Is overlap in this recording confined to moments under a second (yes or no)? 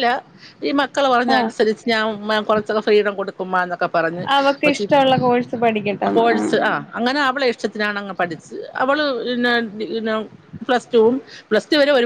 yes